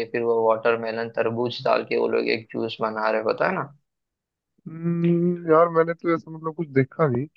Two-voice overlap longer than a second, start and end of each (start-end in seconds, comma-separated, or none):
none